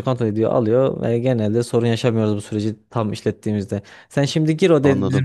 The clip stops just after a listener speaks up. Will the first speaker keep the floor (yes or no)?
yes